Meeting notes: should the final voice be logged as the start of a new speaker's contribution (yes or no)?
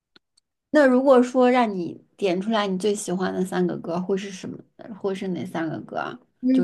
yes